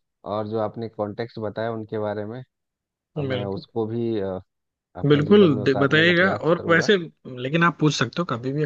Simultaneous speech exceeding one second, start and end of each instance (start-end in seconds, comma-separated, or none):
5.1-6.9